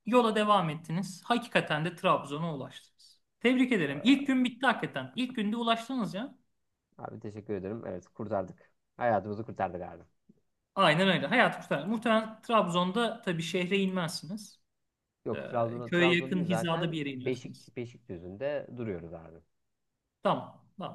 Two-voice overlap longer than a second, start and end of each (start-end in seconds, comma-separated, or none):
15.3-17.7